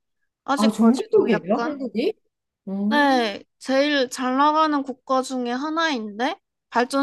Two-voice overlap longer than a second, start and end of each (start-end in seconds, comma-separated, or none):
0.6-1.8